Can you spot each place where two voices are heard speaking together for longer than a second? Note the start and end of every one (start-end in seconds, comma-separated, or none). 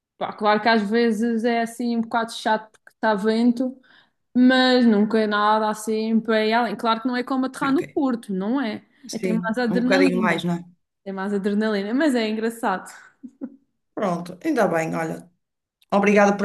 9.1-10.4